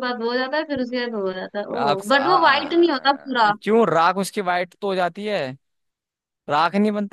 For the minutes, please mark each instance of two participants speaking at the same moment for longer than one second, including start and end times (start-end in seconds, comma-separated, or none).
1.8-3.5